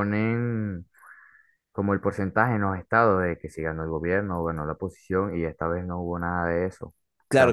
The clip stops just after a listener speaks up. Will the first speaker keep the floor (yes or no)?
no